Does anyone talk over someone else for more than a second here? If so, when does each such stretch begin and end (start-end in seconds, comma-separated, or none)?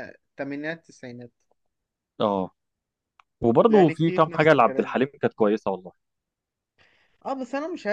3.7-5.0